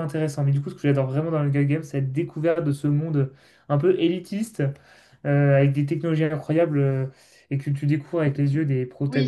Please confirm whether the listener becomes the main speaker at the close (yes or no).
yes